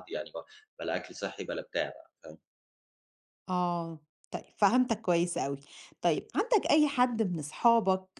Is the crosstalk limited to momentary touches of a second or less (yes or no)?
yes